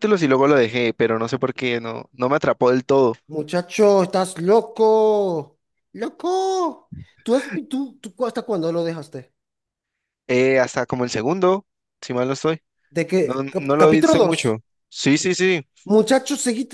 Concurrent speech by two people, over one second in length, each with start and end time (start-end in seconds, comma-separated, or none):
13.2-14.6